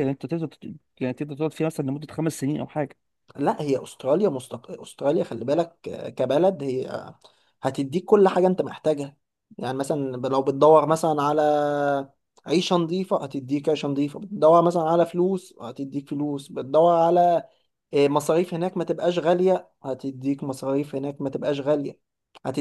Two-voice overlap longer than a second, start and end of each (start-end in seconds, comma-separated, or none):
none